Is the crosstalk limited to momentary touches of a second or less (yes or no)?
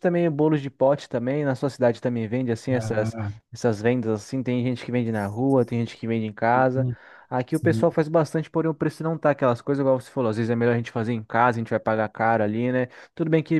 yes